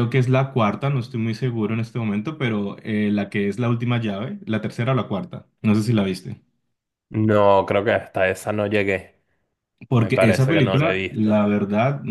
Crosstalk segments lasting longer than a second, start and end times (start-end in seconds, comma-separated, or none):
9.9-11.4